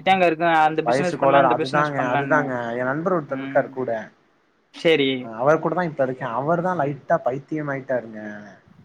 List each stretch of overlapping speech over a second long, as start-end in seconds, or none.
0.9-2.4